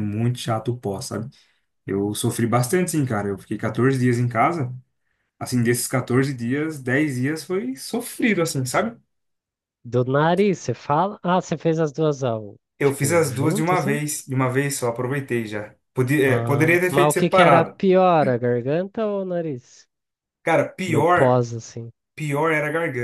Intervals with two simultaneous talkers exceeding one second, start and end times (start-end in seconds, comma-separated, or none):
12.8-14.0, 16.2-17.8